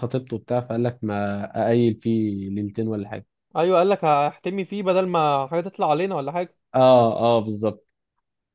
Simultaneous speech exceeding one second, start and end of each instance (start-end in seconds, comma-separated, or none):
none